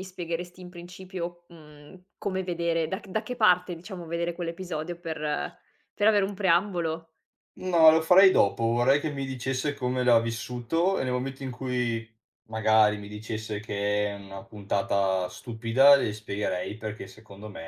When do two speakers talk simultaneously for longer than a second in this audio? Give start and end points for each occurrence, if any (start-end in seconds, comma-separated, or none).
none